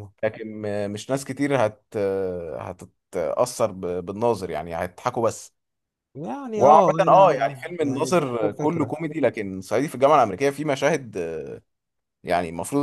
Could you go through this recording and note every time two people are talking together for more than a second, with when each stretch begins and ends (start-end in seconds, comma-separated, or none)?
6.5-8.9